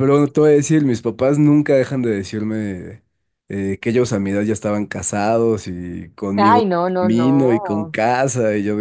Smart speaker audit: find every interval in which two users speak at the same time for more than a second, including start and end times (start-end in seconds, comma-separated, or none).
6.4-8.0